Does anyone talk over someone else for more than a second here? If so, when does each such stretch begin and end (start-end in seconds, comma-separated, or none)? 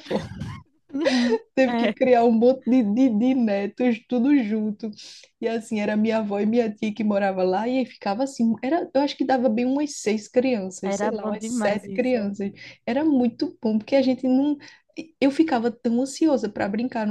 10.8-12.3